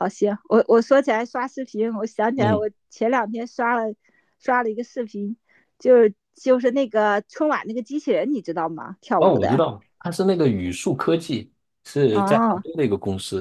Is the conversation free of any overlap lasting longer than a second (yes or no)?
yes